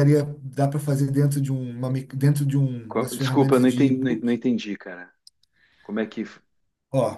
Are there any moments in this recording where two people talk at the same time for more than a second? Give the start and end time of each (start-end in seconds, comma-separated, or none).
2.9-4.4